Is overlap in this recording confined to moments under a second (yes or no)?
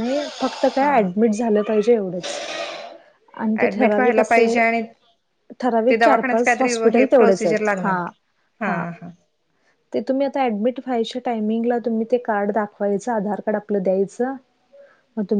no